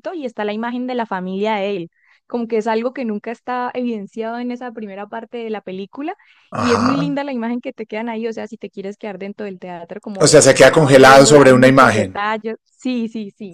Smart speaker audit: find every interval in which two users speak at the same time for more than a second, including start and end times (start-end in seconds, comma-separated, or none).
10.2-12.2